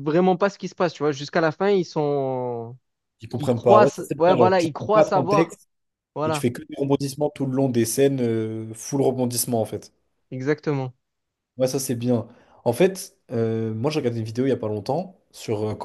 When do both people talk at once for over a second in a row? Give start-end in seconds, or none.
3.4-5.6